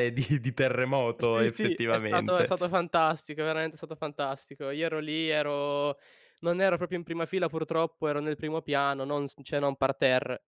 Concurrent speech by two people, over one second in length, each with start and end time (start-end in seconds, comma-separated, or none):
1.2-2.5